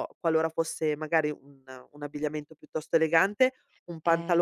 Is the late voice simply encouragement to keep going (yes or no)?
yes